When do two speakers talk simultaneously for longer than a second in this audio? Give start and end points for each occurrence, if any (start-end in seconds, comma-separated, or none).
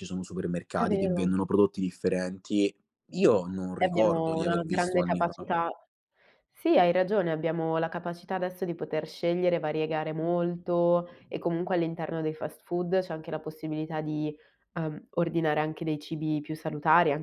3.8-5.3